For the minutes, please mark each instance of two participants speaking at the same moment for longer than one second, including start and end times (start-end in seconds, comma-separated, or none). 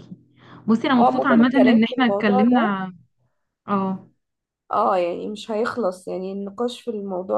1.0-2.8